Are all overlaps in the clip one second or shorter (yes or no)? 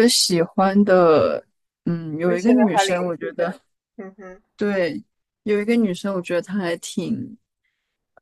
no